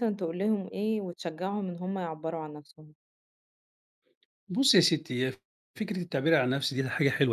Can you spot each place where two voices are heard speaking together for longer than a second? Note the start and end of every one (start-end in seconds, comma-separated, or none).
none